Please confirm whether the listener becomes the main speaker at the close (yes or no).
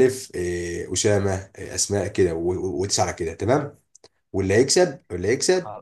no